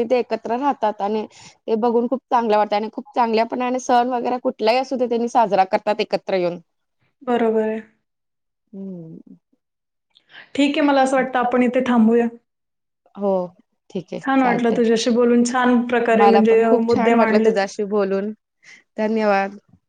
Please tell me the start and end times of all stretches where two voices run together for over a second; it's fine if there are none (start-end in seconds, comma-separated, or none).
16.2-17.6